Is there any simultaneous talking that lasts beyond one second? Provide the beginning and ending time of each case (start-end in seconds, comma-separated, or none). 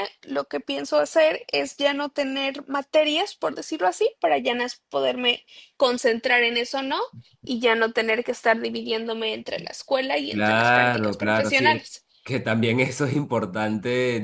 10.3-11.9